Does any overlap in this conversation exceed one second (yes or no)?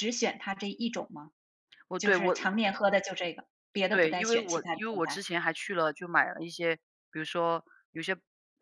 yes